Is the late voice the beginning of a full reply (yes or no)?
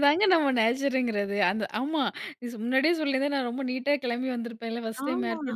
no